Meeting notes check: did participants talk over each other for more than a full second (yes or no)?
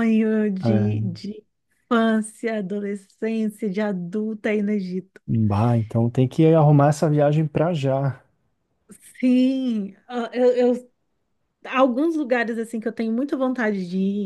no